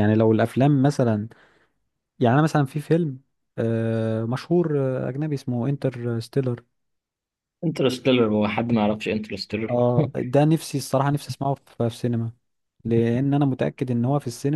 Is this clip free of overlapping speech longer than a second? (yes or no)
yes